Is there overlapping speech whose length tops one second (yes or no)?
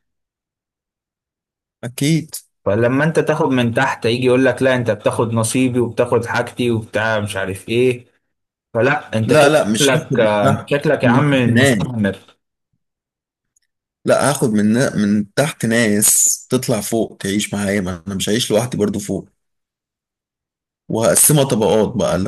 yes